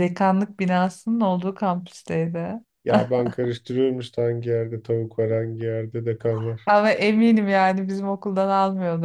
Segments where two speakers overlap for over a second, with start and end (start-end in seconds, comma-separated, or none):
none